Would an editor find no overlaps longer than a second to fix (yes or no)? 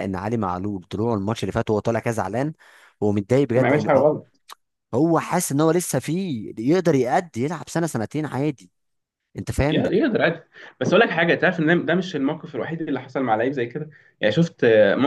yes